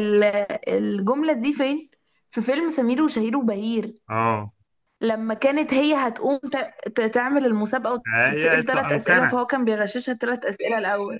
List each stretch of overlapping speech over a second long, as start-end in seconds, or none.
8.1-9.4